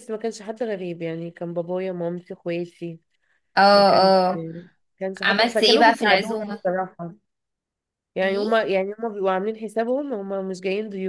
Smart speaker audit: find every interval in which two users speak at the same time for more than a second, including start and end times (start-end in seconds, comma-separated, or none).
5.2-6.6